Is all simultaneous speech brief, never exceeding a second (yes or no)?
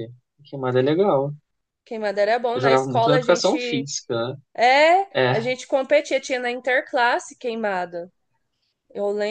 no